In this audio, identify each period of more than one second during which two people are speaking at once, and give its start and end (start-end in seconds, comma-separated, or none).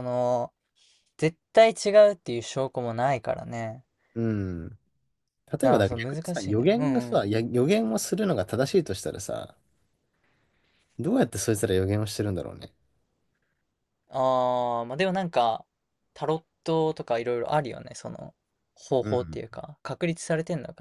5.6-7.2